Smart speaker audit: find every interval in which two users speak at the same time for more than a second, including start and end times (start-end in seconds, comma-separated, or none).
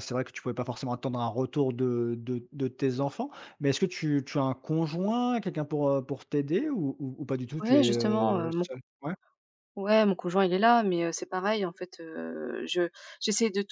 7.6-8.8